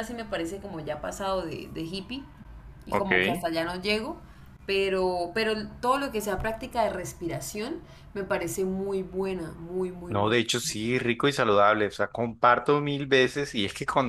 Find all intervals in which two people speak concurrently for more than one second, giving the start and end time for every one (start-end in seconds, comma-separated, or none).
none